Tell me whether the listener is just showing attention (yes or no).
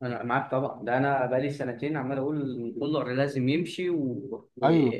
no